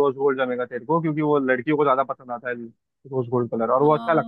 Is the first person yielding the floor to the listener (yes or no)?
yes